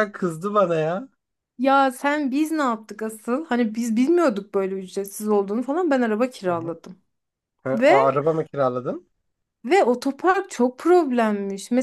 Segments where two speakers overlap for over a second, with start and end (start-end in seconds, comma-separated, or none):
none